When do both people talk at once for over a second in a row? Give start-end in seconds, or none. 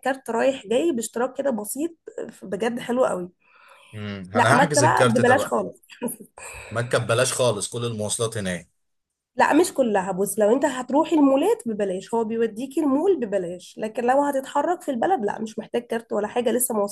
4.3-5.6